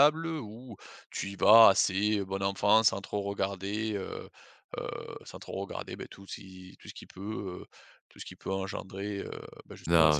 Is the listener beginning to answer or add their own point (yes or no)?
yes